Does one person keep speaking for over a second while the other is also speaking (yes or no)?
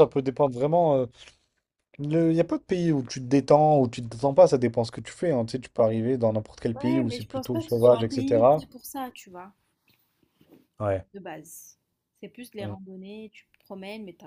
yes